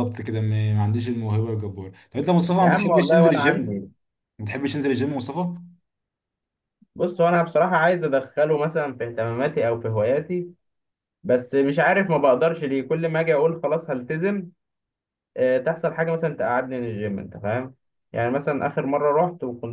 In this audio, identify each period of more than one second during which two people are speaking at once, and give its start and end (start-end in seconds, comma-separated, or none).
2.6-3.8